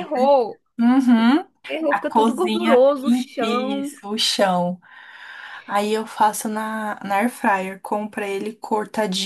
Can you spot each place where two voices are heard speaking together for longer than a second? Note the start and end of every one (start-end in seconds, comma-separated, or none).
1.9-4.0